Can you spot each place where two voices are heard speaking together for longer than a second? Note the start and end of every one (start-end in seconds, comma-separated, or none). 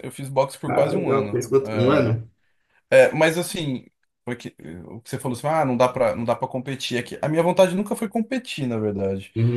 0.7-2.2